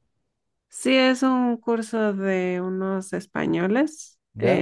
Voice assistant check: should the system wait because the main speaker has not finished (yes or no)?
yes